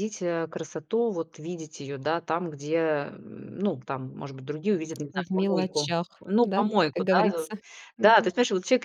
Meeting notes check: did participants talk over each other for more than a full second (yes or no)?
yes